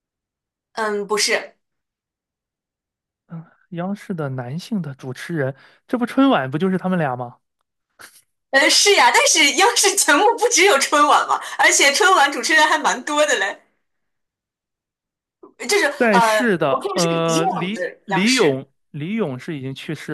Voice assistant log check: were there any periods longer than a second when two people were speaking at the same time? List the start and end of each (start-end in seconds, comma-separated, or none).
16.0-18.6